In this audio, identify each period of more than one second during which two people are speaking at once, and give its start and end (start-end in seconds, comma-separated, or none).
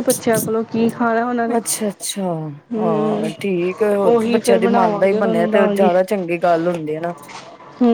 4.2-5.9